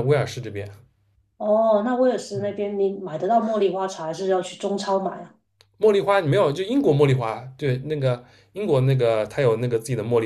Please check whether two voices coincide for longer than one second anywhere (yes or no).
no